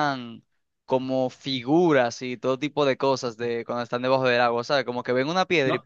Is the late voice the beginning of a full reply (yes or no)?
yes